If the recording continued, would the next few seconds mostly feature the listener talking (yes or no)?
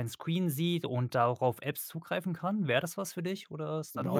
yes